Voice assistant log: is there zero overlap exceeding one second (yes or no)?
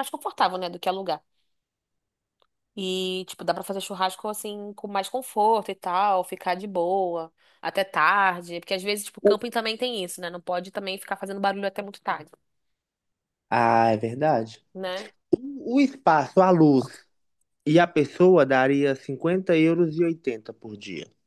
yes